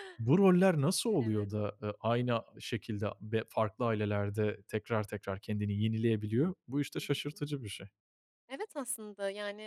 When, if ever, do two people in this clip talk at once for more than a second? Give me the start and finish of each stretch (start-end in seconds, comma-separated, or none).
none